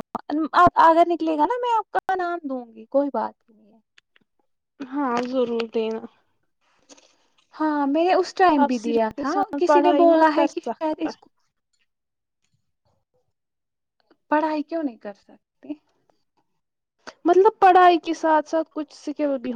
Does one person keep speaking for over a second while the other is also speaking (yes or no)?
yes